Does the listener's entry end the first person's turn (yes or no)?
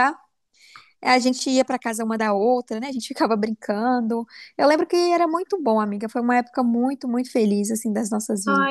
yes